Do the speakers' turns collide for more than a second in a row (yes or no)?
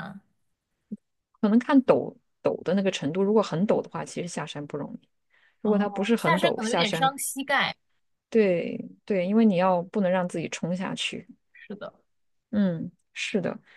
yes